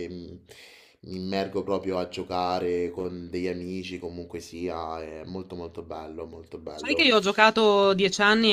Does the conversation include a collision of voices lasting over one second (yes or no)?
no